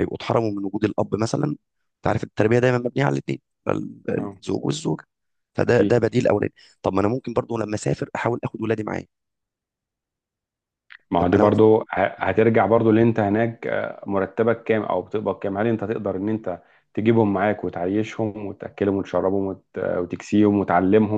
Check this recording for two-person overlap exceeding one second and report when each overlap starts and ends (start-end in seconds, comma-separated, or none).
none